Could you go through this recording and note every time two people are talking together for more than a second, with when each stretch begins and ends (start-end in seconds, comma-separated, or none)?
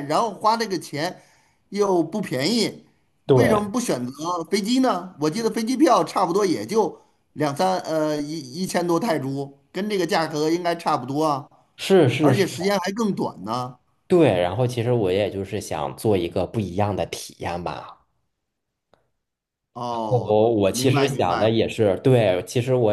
20.1-21.6